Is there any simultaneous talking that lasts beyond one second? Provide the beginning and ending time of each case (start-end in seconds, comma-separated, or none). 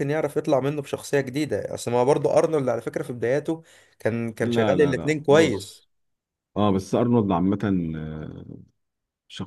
4.4-5.8